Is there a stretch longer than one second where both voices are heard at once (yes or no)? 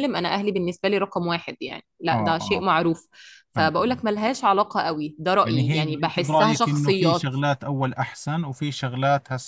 yes